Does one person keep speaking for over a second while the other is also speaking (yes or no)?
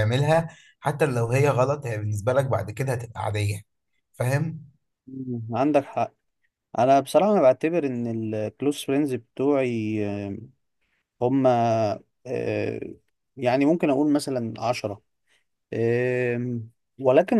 no